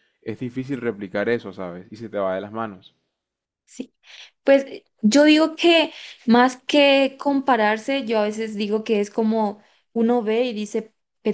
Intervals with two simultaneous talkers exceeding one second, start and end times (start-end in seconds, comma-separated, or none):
none